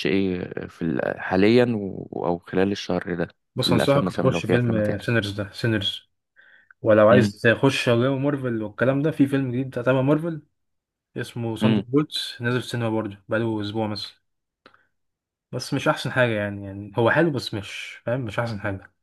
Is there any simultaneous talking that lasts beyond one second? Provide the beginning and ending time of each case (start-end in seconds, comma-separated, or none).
3.7-5.0